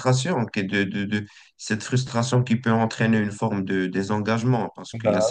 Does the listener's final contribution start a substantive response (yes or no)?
no